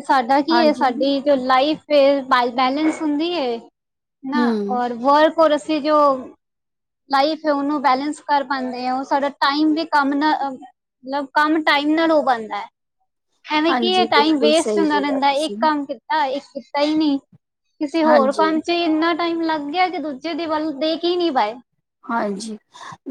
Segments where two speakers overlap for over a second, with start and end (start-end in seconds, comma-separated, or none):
13.7-15.6